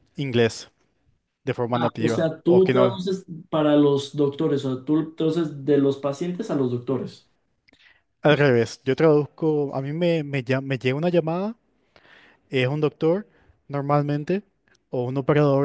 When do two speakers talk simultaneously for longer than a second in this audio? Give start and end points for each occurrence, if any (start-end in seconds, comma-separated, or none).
1.7-3.0